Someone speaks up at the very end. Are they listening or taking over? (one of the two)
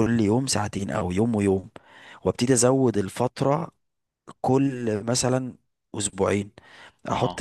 listening